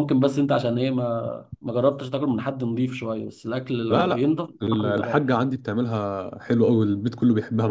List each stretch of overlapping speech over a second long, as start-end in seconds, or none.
3.9-5.3